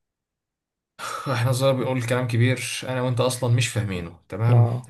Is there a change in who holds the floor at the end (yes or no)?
no